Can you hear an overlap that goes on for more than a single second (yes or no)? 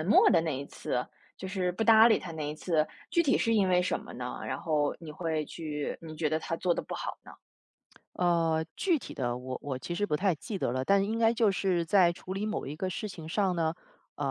no